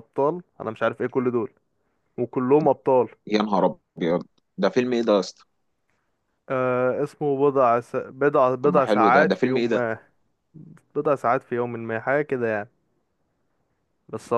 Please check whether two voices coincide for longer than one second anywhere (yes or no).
yes